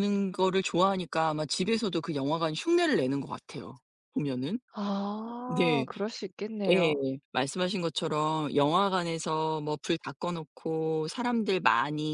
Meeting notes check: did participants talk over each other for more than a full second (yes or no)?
no